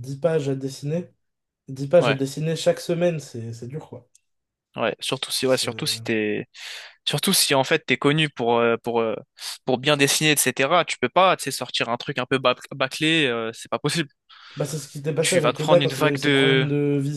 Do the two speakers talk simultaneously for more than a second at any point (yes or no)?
yes